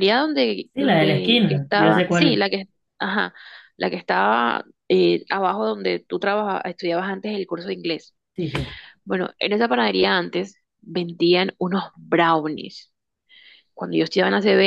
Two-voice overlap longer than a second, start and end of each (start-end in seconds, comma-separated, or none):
0.7-2.4